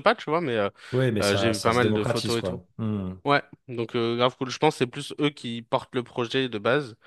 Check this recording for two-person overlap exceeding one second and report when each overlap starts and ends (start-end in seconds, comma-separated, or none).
1.2-2.6